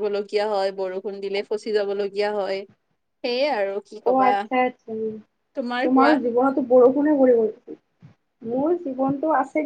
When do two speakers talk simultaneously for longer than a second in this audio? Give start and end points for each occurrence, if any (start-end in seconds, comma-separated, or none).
none